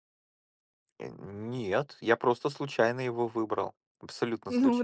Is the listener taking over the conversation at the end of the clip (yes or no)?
yes